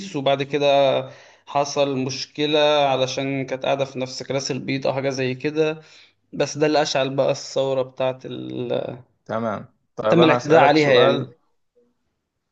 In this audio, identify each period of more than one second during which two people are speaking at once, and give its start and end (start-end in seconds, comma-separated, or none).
10.1-11.3